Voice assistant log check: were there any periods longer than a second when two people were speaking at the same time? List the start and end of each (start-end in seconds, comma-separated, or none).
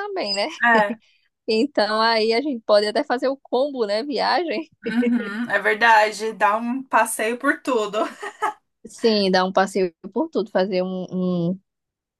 none